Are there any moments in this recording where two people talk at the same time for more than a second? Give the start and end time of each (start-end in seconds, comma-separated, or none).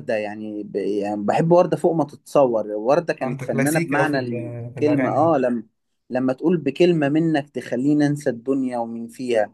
3.2-5.3